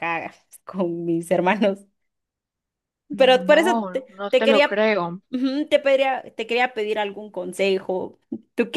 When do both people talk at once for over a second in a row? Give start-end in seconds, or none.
3.2-4.8